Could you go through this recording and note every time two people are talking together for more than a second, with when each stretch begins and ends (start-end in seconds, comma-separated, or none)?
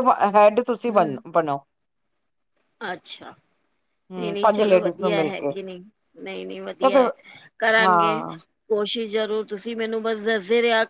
4.2-5.5